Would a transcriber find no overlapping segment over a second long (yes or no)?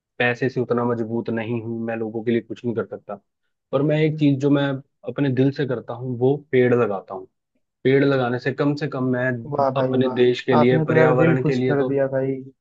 no